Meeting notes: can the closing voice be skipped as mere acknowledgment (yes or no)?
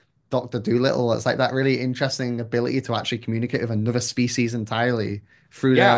no